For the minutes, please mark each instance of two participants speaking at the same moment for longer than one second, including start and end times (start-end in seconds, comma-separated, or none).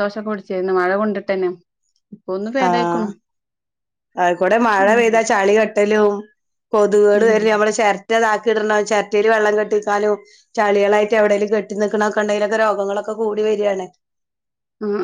none